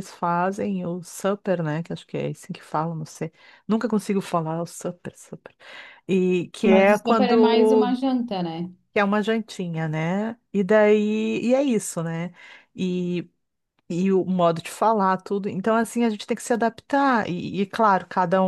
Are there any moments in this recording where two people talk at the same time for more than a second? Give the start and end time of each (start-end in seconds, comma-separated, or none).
6.6-7.9